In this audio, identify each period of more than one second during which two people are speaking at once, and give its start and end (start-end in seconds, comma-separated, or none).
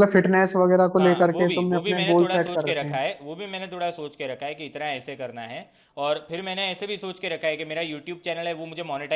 1.0-3.0